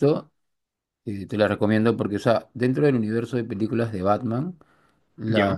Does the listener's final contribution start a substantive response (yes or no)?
no